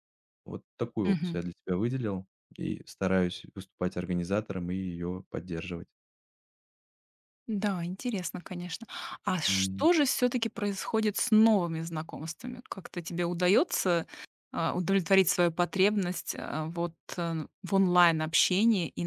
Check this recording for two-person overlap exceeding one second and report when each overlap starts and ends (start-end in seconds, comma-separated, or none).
none